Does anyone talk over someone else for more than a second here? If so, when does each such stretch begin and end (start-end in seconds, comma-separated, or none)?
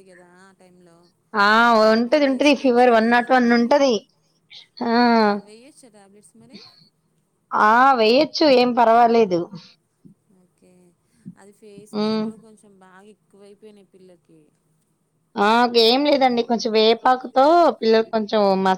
1.9-3.6